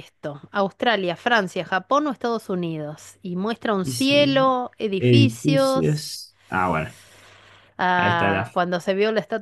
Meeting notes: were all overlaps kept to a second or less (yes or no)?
no